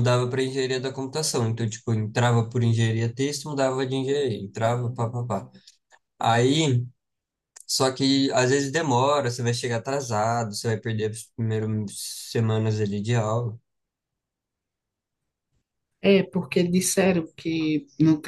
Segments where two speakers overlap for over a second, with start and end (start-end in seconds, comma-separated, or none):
none